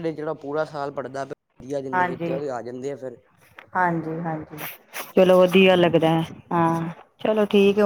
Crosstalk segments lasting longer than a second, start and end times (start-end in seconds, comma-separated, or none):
none